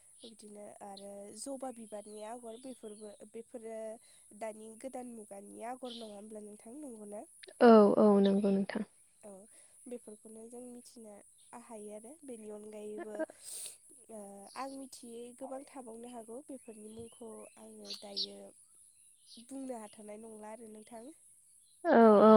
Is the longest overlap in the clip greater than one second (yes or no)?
no